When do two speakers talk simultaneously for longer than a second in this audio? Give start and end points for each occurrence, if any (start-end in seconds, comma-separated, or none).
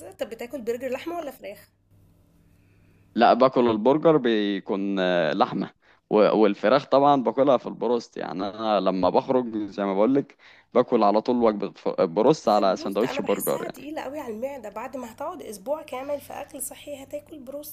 12.4-13.9